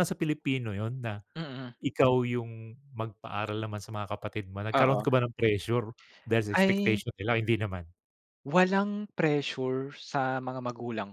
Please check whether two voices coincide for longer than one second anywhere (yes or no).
no